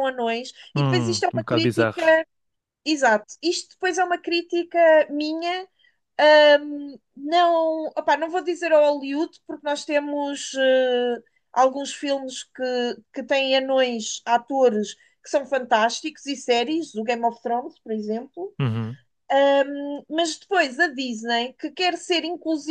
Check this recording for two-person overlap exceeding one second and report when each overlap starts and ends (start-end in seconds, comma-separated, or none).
0.7-2.1